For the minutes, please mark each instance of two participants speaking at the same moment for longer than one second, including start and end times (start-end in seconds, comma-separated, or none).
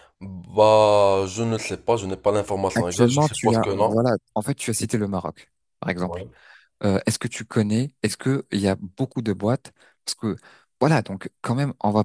2.7-4.0